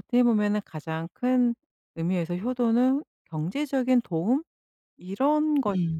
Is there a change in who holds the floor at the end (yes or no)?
no